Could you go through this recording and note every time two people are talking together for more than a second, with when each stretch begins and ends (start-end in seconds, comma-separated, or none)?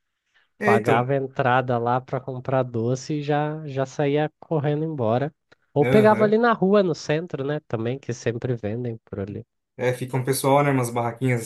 none